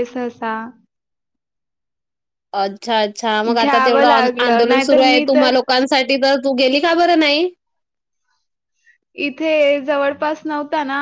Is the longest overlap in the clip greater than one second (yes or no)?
yes